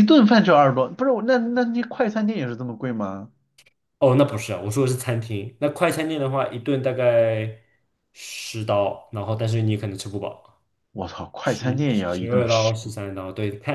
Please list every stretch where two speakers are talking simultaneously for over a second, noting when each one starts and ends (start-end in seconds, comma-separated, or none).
11.4-12.8